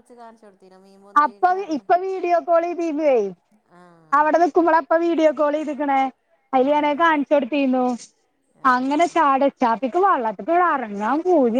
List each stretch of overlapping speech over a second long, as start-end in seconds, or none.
none